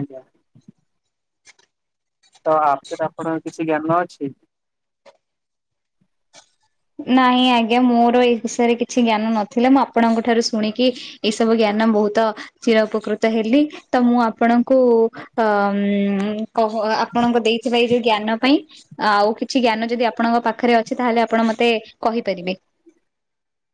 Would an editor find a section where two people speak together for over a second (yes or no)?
no